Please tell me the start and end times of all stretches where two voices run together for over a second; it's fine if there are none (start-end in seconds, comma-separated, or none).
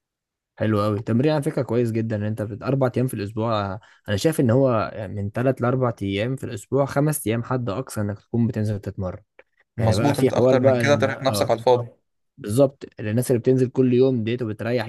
9.8-11.5